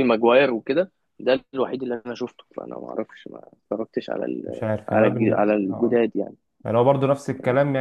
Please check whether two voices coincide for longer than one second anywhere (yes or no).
yes